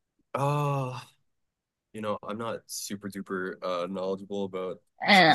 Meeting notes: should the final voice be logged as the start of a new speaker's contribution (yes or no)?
no